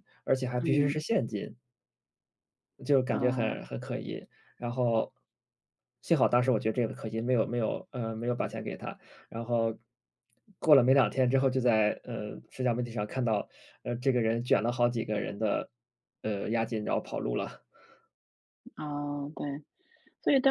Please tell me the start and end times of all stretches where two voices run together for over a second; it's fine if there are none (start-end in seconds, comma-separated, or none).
none